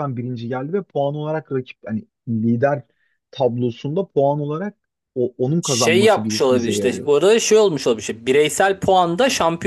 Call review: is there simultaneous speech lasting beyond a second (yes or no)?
yes